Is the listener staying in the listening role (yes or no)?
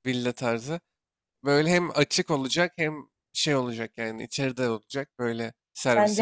no